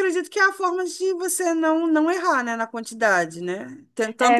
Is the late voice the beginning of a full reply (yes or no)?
no